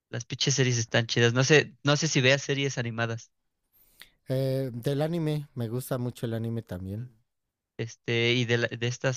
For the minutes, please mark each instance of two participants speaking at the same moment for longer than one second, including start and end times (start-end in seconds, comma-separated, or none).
none